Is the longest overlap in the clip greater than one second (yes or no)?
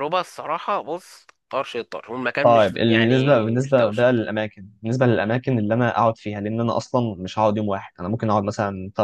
yes